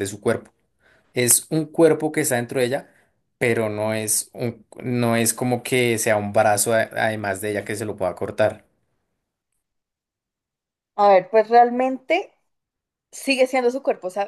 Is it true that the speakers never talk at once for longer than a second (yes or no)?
yes